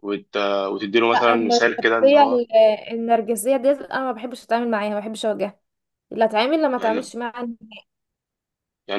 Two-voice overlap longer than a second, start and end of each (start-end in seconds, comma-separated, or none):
1.1-2.4